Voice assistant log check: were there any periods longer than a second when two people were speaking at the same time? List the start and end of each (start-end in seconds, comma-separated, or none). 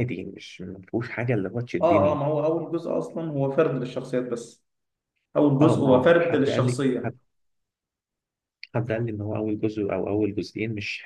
5.6-7.1